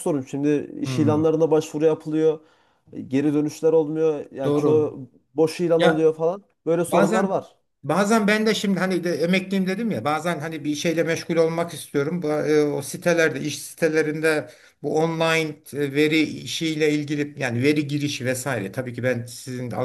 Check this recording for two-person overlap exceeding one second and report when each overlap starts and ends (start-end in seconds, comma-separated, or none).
none